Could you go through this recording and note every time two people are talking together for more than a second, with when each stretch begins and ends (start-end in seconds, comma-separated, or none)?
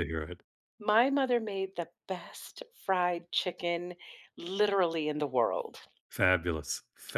none